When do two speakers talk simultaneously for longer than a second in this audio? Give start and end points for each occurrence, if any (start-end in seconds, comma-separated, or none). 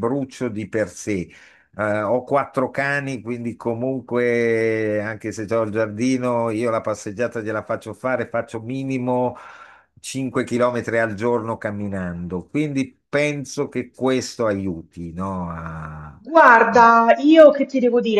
none